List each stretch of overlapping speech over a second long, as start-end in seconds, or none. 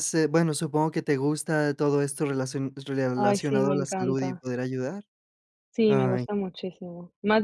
3.2-4.4